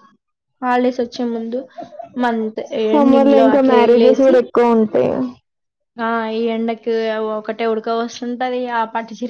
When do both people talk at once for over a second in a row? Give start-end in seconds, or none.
none